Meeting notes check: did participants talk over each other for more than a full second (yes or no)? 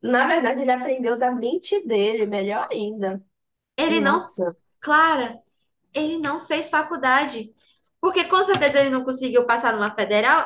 no